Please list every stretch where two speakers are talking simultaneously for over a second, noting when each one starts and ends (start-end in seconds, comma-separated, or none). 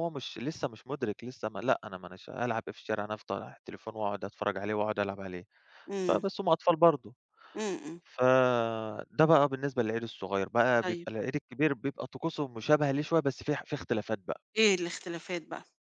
none